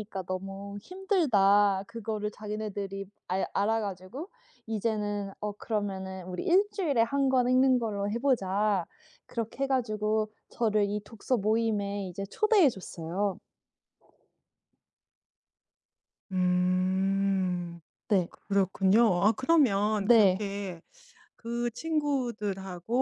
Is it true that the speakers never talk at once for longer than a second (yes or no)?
yes